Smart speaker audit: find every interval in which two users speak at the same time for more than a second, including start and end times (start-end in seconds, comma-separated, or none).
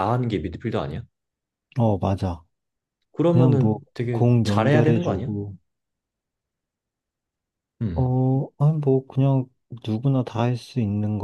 3.3-5.3